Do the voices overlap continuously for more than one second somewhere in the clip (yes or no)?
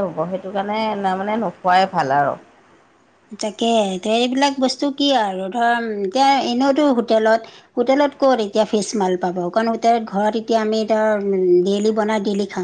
no